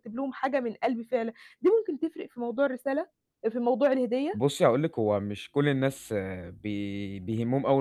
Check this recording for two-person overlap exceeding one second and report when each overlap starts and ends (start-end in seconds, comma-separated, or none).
none